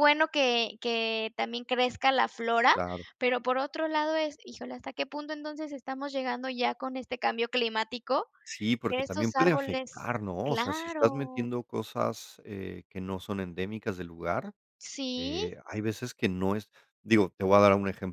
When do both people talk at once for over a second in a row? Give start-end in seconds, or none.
8.9-11.5